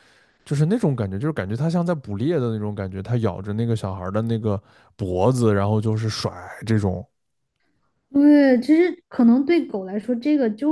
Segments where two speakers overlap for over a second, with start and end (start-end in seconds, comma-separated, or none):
none